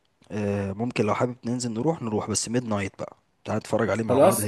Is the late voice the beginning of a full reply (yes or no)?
yes